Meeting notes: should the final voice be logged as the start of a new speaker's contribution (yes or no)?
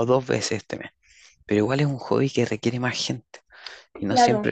no